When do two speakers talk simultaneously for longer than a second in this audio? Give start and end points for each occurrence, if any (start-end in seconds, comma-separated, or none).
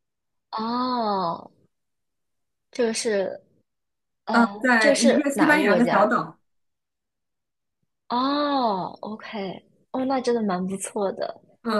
4.3-6.1